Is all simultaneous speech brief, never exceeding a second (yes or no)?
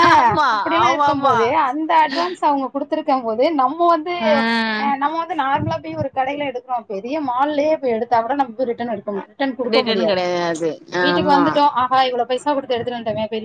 yes